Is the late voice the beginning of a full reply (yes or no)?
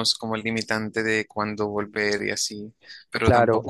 no